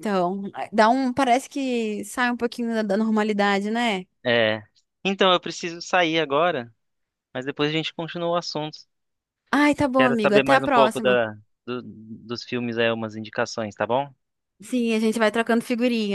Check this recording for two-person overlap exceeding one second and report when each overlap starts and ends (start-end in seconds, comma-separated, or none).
10.0-11.2